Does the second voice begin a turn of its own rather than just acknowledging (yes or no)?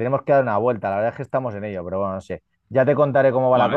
no